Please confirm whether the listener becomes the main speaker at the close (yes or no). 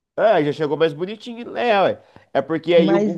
no